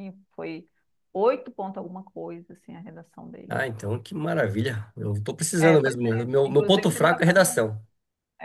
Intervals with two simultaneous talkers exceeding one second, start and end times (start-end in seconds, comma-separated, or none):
5.6-7.6